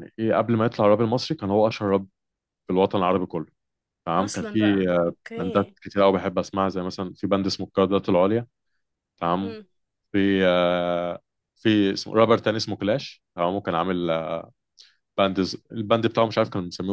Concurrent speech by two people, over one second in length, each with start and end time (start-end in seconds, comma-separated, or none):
4.2-5.8